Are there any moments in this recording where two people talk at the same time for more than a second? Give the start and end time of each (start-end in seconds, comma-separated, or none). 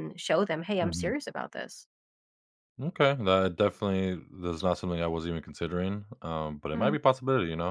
none